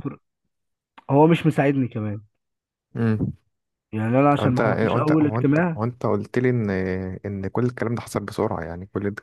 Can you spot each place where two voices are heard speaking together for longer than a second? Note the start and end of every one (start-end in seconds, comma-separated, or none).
4.4-5.8